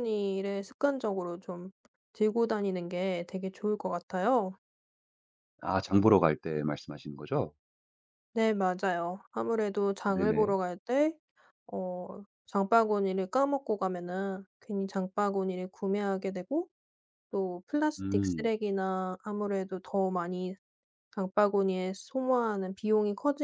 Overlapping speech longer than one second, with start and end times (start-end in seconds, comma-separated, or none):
none